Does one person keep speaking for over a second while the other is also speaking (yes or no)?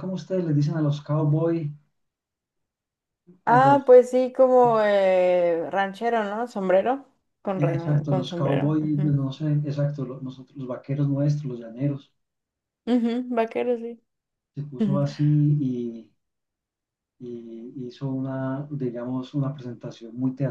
yes